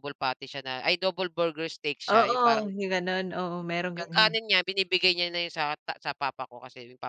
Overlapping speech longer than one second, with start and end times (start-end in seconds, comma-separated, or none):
none